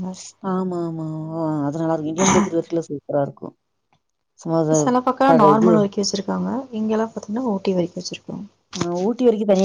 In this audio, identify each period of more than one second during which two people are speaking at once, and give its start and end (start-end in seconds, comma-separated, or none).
none